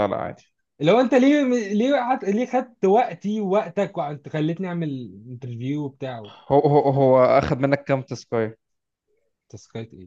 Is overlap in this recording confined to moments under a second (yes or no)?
yes